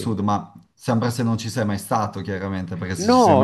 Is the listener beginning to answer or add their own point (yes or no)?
yes